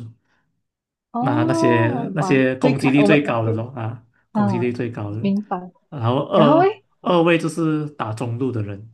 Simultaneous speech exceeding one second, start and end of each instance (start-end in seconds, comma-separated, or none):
1.2-3.2